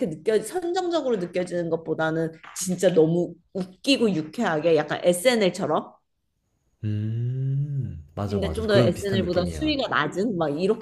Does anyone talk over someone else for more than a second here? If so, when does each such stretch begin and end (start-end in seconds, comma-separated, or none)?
8.3-9.8